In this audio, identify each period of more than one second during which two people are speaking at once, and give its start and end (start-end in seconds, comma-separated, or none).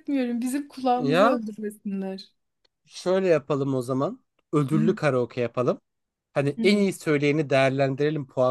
none